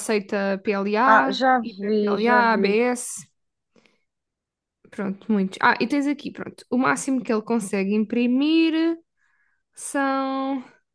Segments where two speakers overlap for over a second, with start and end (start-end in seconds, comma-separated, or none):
1.1-2.8